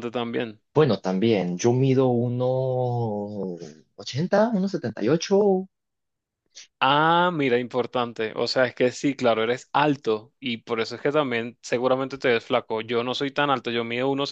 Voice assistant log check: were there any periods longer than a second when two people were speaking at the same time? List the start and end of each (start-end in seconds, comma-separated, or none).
none